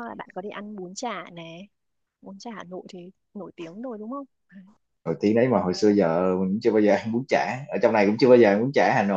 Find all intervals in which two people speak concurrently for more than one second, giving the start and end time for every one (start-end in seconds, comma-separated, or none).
none